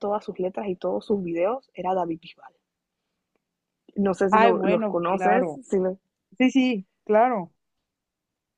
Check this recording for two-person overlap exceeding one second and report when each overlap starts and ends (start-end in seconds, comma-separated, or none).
4.3-5.6